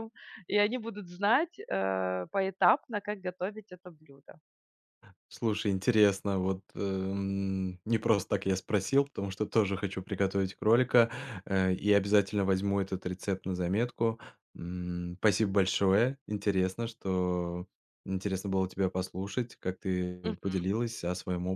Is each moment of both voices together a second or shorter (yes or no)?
yes